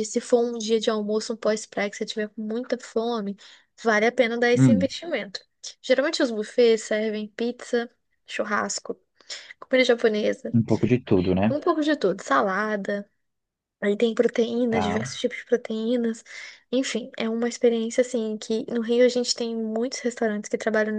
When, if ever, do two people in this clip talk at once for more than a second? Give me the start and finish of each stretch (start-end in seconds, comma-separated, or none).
none